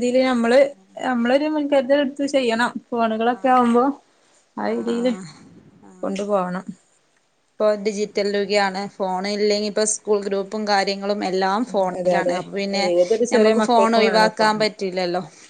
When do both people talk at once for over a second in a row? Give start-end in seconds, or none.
13.3-14.7